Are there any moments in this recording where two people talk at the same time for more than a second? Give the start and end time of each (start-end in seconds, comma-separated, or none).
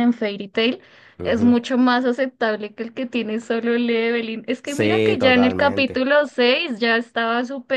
4.6-6.1